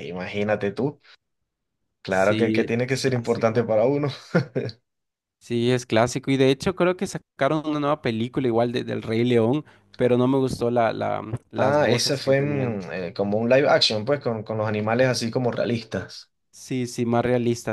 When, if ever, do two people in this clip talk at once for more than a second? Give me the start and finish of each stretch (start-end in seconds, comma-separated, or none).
2.1-3.7, 11.6-12.8